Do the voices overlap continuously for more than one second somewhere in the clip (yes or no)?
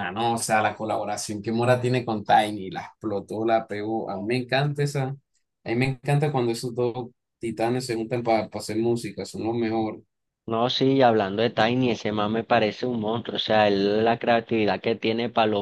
no